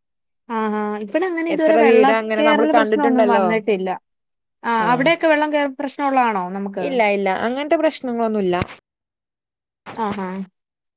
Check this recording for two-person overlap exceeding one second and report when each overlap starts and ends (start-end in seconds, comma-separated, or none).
1.6-3.5